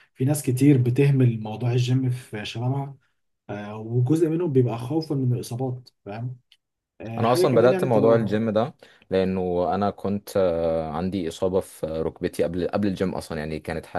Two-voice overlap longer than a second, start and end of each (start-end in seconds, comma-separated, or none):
7.2-8.4